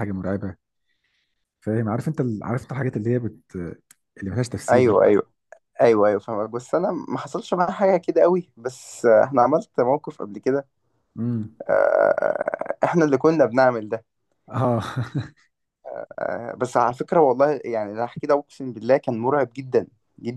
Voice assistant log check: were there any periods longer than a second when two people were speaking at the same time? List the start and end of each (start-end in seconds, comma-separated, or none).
none